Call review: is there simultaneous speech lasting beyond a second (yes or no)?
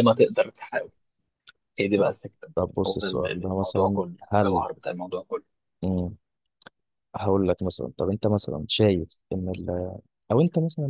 yes